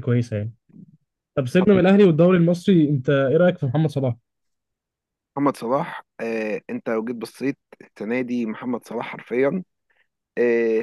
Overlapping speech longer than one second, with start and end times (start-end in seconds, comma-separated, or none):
none